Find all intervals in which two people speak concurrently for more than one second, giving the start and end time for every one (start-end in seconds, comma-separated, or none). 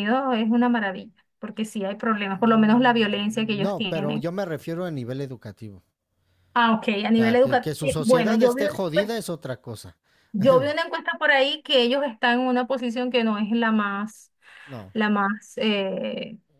2.3-4.3, 7.1-9.2